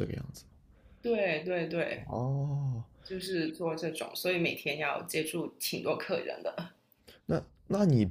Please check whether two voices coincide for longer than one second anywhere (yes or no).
no